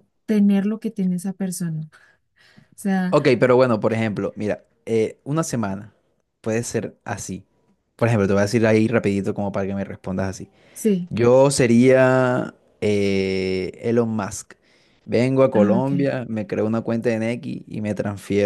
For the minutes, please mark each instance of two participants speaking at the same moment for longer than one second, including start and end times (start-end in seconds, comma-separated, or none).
none